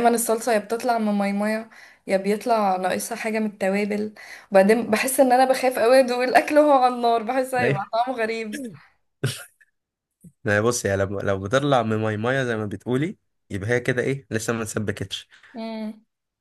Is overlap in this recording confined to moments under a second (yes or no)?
yes